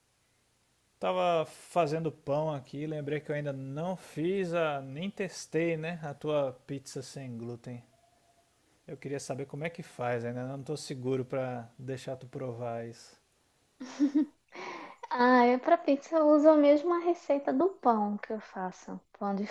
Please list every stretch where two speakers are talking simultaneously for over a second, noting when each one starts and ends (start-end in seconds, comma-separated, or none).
none